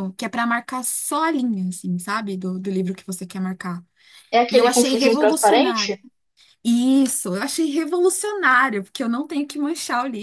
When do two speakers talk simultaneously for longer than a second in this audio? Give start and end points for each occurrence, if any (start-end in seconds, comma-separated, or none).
4.5-6.0